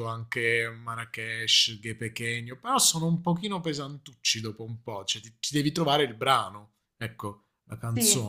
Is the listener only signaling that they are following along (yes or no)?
no